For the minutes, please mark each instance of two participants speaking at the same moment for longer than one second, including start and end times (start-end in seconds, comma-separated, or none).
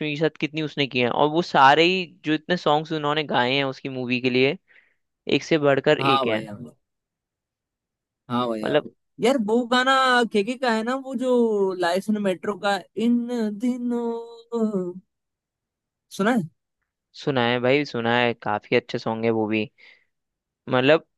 none